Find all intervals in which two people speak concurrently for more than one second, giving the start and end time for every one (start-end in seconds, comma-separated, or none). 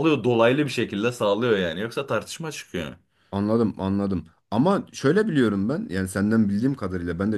none